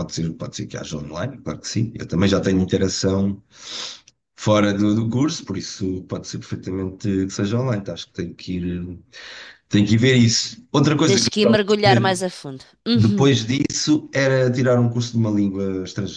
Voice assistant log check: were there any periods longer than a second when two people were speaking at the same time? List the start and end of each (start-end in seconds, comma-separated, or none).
none